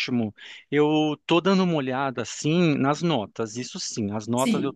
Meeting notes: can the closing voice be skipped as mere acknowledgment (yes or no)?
yes